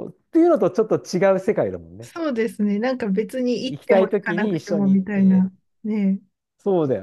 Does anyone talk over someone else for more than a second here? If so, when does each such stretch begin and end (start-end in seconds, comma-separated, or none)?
3.7-5.5